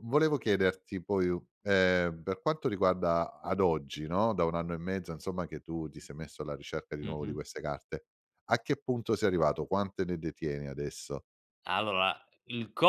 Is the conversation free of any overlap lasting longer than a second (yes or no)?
yes